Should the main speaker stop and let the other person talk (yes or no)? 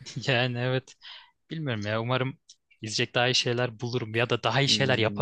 yes